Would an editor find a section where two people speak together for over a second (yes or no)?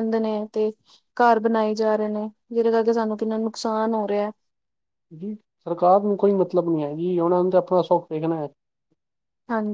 no